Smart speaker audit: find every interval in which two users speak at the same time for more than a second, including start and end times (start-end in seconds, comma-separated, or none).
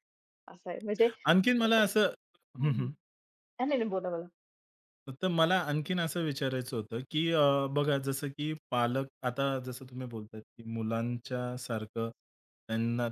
none